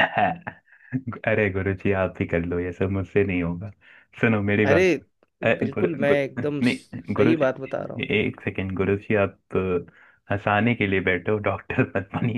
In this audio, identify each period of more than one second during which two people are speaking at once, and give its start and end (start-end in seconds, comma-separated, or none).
5.4-7.7